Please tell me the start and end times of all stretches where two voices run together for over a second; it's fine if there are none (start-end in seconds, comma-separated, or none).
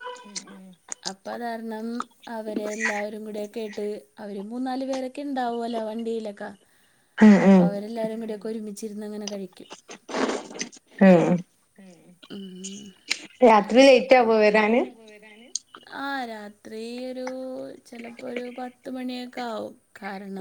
none